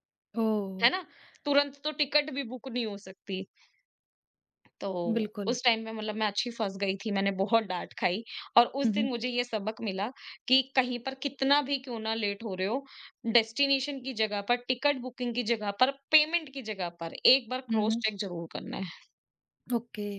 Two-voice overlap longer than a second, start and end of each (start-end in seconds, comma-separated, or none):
none